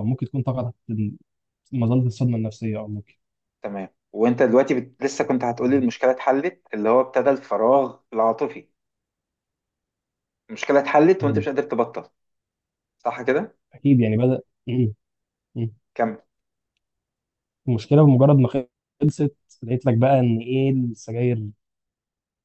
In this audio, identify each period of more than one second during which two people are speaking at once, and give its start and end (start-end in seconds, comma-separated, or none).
none